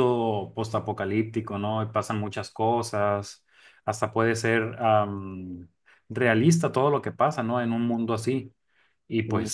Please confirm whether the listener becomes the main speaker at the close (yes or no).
no